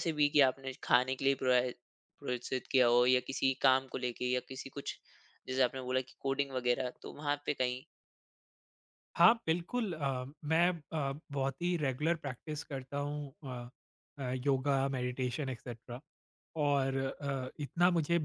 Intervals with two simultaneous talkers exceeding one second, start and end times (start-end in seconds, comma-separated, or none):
none